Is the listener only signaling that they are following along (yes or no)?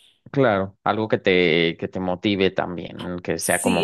no